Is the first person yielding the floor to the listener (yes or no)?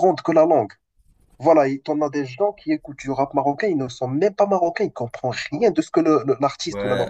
yes